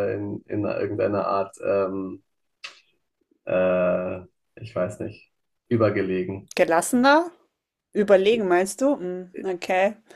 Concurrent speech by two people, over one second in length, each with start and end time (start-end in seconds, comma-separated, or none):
none